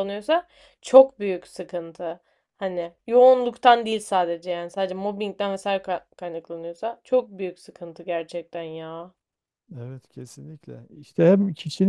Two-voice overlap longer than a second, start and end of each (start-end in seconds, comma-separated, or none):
none